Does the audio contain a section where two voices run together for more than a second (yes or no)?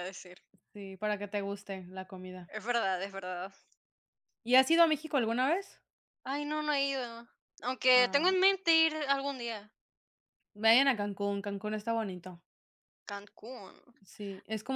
no